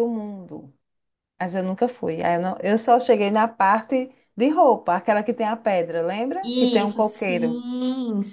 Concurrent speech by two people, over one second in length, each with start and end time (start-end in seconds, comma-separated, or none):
6.4-7.6